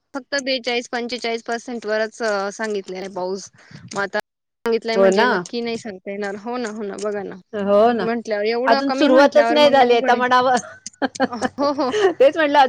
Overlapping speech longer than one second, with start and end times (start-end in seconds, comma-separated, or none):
8.7-10.2